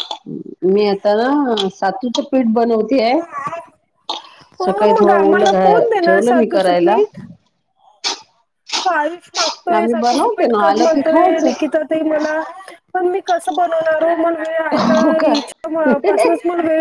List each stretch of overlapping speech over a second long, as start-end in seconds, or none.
4.6-7.0, 9.8-11.5